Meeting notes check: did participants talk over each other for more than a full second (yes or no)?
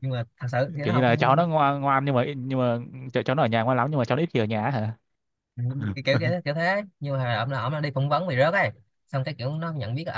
no